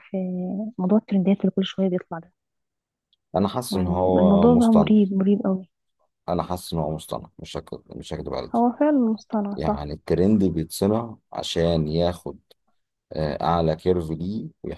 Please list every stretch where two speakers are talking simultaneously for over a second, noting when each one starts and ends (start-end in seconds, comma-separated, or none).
3.7-4.9